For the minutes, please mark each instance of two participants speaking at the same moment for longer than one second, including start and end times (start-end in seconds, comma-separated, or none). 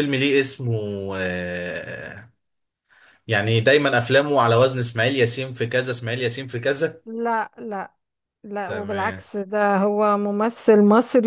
none